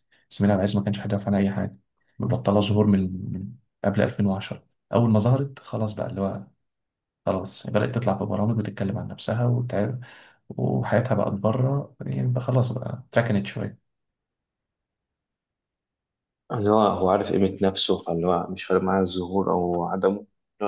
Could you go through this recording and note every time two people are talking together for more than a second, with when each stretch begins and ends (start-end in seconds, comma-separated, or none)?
none